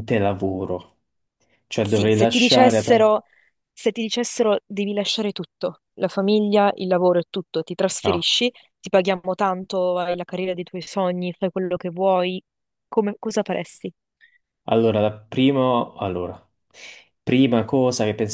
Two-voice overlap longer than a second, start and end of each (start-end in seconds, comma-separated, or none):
1.8-3.1